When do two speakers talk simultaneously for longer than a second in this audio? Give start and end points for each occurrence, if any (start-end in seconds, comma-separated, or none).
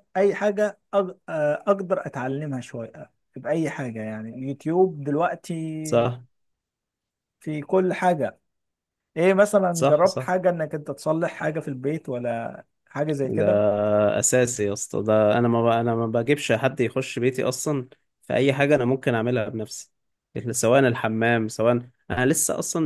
none